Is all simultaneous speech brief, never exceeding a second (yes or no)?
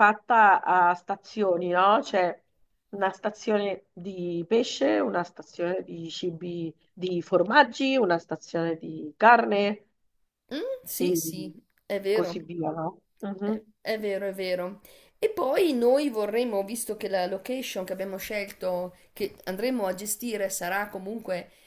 yes